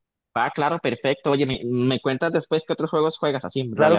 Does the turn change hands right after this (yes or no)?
yes